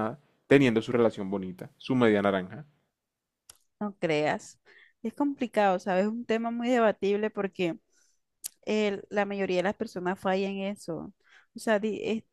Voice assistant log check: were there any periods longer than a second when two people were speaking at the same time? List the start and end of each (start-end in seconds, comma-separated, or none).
none